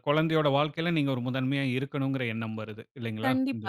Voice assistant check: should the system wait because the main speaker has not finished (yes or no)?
no